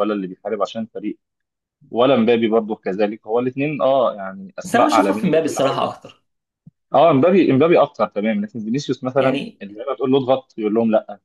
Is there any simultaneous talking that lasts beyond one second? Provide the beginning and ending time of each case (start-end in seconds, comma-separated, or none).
4.6-5.9